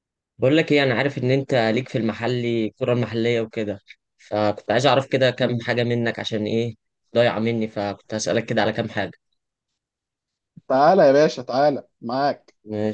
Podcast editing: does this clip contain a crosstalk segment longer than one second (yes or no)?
no